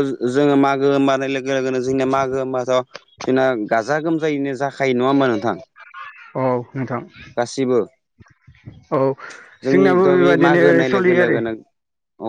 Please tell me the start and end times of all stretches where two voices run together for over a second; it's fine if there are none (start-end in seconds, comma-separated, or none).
9.7-11.4